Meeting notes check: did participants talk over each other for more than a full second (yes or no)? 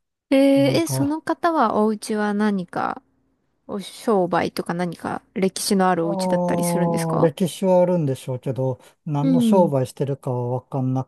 yes